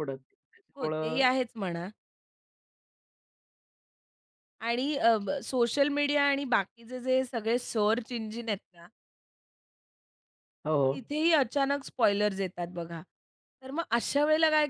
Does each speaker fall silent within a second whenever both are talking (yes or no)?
yes